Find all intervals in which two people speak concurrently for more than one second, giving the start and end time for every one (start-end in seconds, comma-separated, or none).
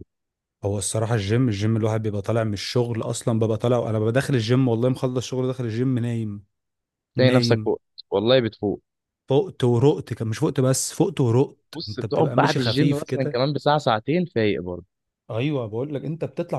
11.8-13.4